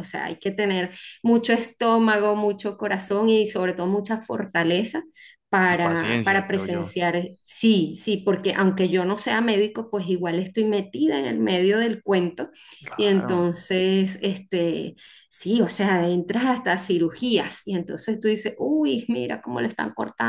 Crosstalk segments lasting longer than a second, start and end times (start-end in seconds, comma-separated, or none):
5.7-6.9